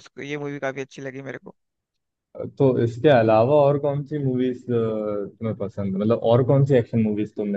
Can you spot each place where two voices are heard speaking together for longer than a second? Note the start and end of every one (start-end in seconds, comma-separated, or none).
none